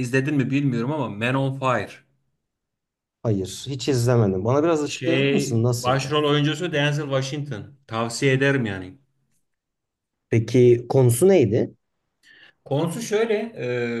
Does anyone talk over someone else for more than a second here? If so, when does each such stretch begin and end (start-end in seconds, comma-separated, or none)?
4.9-6.2